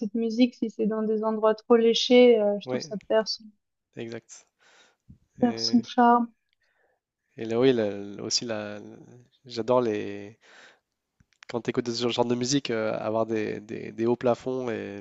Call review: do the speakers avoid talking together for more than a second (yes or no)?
yes